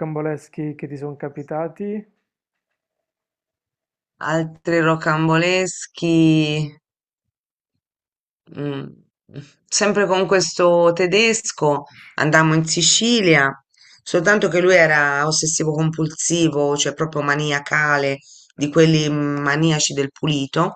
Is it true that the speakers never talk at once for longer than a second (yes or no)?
yes